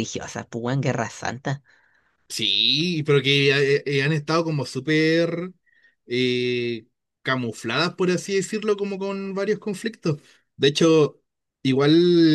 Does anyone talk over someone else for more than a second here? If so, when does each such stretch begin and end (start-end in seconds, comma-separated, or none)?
none